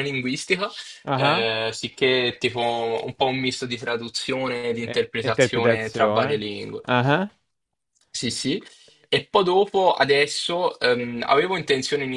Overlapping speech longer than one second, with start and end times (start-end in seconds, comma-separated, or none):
4.8-6.8